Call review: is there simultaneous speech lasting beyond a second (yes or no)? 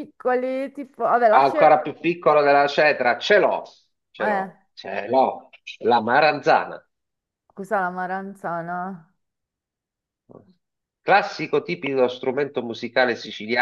no